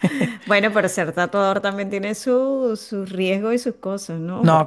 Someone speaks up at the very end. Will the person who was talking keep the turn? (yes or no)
no